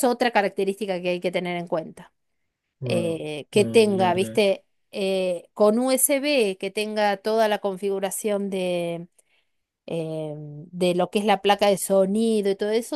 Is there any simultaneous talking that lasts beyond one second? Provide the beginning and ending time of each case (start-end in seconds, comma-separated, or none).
2.8-4.4